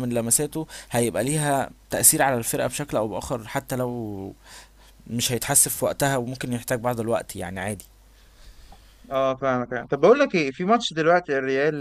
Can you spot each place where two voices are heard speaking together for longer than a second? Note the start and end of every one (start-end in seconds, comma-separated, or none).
none